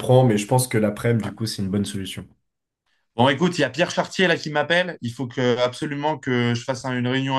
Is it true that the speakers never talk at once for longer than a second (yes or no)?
yes